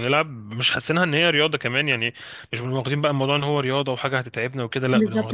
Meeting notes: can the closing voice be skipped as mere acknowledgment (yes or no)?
no